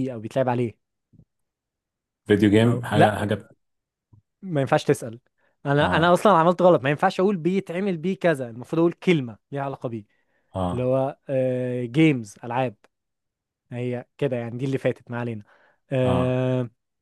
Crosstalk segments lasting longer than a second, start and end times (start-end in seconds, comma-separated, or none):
none